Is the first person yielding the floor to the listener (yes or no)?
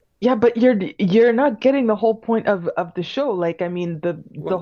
no